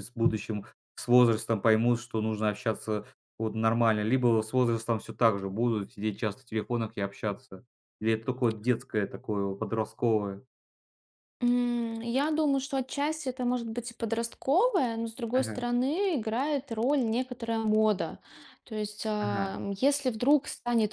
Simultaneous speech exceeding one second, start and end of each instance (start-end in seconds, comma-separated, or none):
none